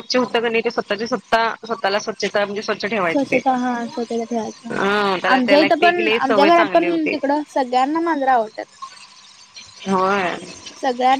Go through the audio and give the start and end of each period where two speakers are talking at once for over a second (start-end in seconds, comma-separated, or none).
5.3-7.1